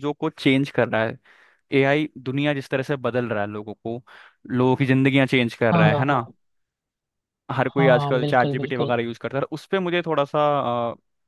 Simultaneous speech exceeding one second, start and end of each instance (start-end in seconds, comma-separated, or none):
7.6-8.9